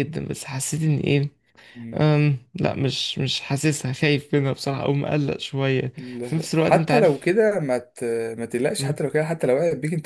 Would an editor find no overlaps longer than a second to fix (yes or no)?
no